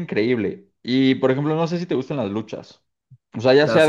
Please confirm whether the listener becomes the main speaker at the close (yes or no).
no